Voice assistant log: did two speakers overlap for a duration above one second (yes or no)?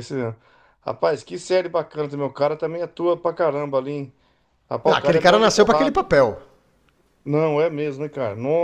yes